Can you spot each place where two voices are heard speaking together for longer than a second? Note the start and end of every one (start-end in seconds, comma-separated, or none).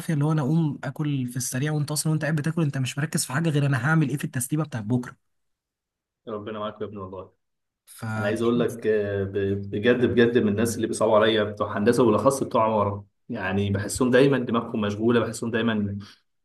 none